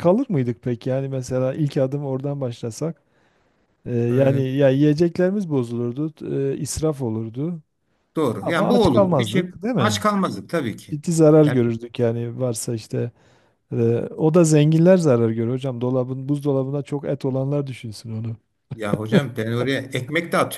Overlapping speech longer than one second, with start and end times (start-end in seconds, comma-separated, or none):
8.4-10.0